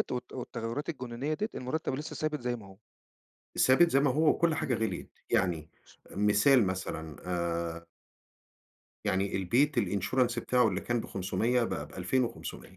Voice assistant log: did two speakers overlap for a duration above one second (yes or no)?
no